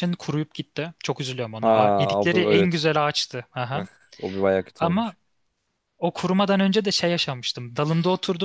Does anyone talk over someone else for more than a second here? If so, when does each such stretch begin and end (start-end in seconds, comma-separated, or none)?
1.6-2.8